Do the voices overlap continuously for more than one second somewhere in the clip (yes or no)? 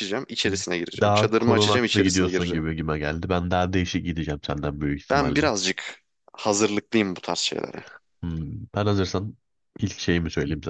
yes